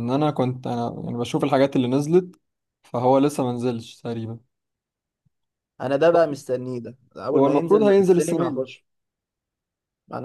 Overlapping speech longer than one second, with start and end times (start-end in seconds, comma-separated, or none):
7.3-8.7